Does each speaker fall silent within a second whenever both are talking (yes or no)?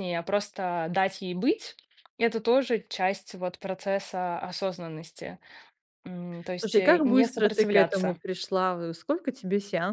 no